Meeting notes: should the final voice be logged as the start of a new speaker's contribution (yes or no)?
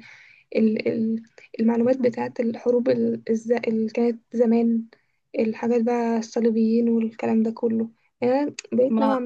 no